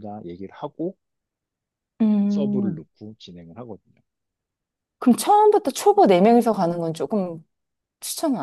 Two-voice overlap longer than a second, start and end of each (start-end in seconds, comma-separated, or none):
none